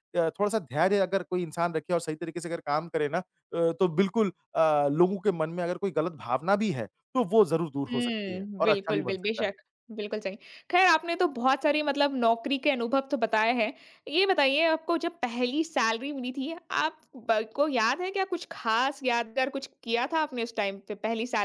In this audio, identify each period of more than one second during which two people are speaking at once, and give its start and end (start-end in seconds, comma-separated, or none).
7.9-9.5